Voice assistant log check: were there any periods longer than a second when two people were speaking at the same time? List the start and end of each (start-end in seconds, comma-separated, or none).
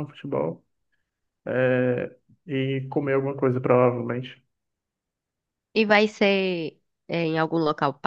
none